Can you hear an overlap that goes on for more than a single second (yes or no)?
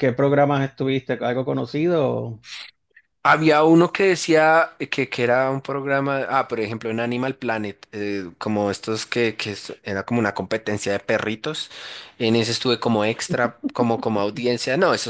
no